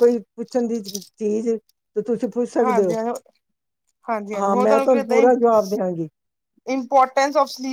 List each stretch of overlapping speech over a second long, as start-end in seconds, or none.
none